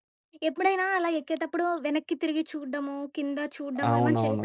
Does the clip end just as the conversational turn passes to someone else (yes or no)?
yes